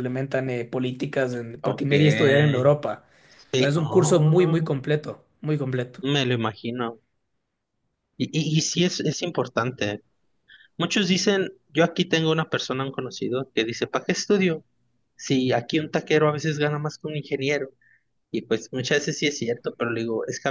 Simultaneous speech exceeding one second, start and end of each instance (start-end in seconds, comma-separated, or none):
3.5-4.8